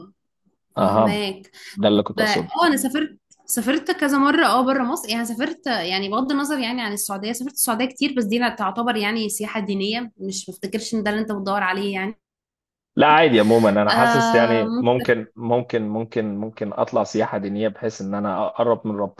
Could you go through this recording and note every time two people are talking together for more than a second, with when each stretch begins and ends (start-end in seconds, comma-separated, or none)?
13.9-15.1